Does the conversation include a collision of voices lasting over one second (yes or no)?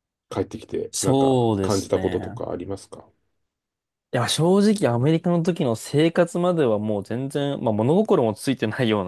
yes